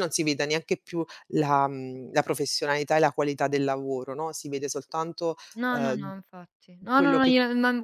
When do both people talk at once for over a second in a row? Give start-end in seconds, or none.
none